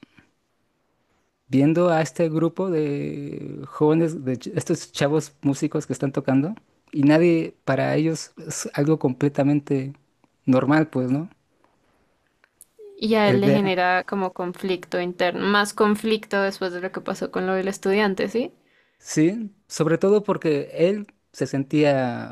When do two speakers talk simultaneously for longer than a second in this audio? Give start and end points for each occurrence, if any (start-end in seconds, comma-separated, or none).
none